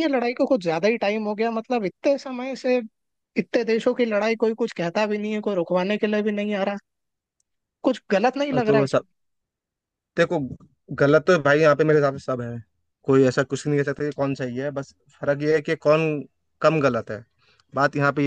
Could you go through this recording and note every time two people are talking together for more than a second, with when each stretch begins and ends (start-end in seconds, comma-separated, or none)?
none